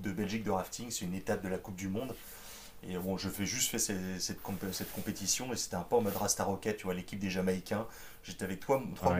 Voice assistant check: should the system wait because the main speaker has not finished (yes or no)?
yes